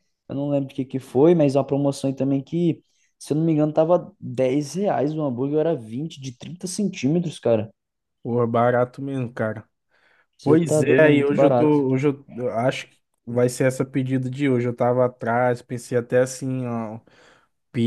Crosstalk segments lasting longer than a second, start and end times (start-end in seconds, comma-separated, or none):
10.4-11.8